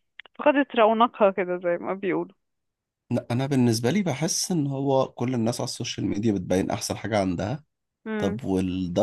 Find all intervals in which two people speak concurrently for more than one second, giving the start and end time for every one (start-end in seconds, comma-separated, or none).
none